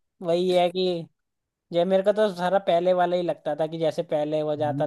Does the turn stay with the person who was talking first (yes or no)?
no